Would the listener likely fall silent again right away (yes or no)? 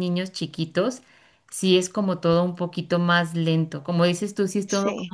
yes